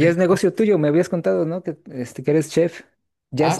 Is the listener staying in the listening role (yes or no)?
no